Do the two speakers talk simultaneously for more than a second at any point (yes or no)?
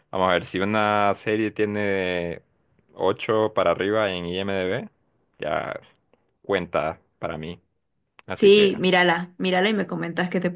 no